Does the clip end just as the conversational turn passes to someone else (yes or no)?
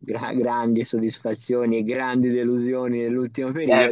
yes